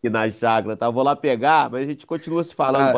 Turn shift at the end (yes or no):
yes